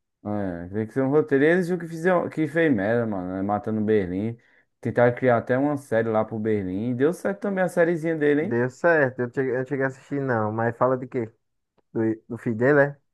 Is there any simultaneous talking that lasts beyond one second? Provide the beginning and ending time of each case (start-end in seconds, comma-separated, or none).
none